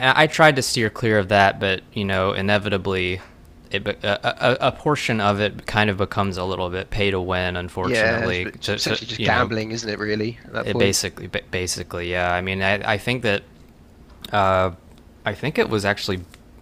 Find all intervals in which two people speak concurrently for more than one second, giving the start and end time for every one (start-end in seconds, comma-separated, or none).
7.8-9.5